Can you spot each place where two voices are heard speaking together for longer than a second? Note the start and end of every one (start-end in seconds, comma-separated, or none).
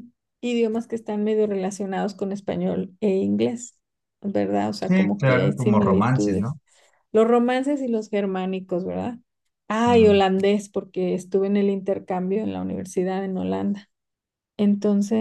4.8-6.6